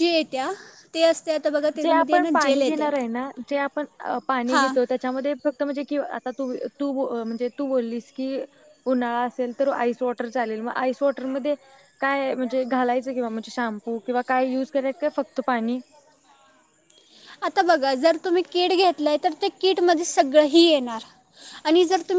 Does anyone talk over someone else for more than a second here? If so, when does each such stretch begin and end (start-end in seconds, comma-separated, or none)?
none